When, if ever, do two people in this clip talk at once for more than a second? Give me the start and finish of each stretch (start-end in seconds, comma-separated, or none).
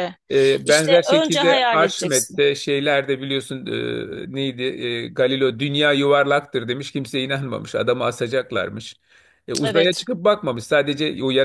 0.7-2.4